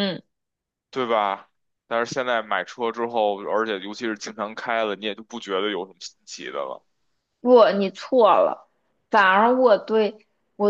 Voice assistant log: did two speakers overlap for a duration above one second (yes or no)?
no